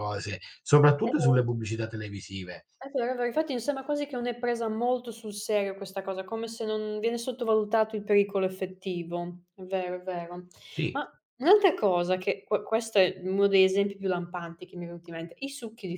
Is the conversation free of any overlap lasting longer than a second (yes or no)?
yes